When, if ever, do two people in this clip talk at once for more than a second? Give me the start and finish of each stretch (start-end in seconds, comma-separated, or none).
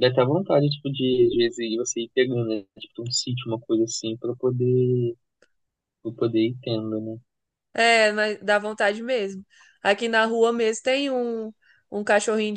none